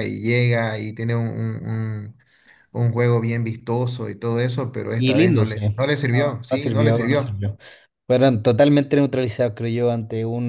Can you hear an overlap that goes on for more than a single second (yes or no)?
yes